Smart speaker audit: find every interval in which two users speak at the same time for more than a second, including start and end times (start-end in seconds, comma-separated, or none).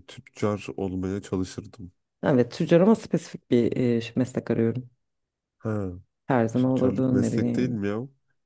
6.5-7.8